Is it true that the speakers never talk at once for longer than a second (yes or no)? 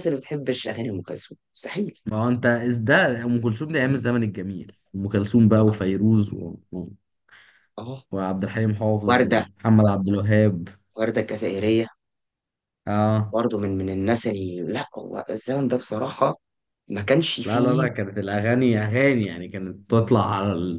yes